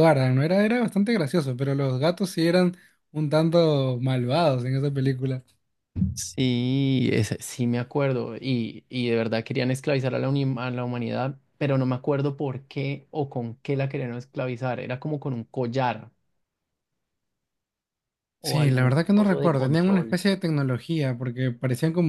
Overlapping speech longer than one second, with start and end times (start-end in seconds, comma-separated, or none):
18.4-20.2